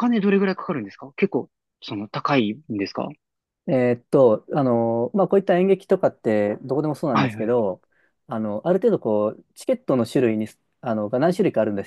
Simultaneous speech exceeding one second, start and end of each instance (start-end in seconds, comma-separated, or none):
none